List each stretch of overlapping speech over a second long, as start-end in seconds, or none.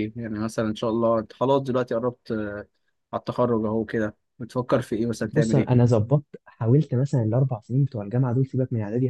none